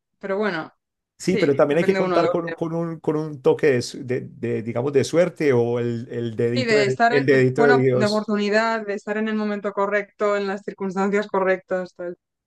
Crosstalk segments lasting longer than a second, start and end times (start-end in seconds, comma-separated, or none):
1.2-2.6, 6.5-8.3